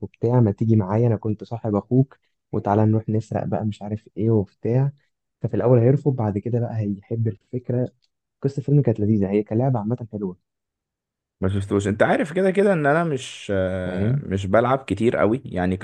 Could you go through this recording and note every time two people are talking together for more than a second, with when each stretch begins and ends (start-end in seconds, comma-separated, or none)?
none